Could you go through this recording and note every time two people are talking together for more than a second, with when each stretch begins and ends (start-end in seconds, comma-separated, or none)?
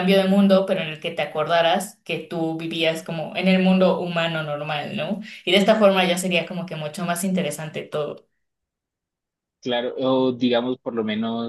none